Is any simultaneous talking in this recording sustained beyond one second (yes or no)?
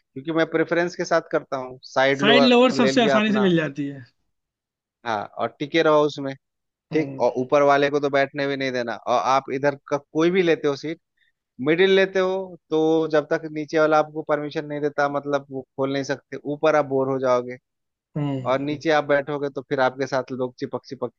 yes